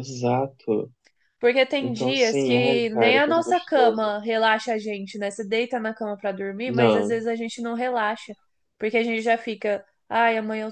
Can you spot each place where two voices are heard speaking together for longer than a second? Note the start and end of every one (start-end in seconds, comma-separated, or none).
1.8-4.1